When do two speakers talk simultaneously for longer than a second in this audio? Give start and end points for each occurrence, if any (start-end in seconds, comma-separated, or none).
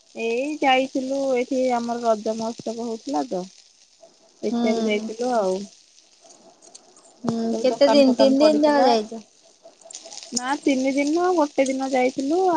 7.3-8.9